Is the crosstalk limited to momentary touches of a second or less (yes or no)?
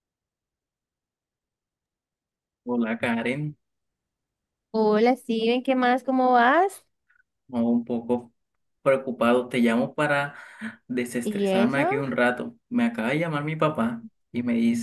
yes